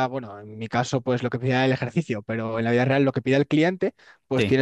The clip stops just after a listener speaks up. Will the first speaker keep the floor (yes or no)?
yes